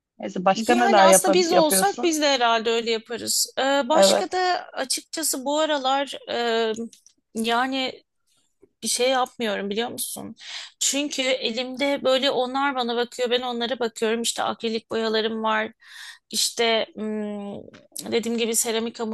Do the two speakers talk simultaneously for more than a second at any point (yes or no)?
yes